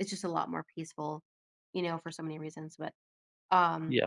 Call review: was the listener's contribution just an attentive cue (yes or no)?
yes